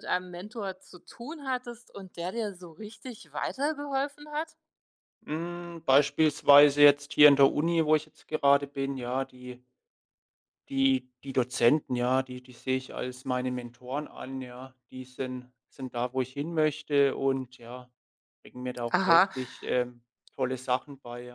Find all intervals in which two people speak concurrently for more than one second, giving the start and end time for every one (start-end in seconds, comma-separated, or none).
none